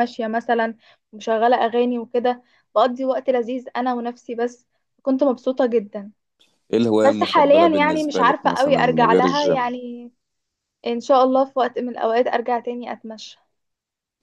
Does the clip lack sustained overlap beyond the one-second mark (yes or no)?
no